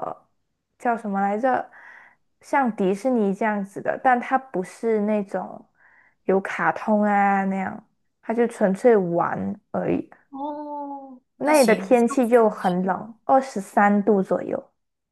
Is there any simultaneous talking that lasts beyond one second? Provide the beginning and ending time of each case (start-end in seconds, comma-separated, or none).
11.4-13.0